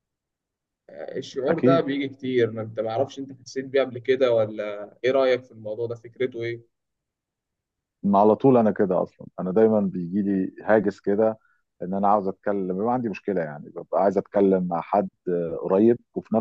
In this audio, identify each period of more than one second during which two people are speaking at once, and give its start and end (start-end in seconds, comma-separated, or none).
none